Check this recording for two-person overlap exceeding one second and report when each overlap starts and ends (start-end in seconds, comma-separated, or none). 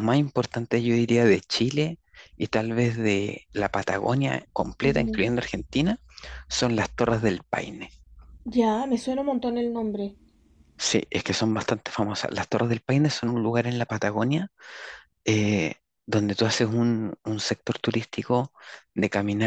none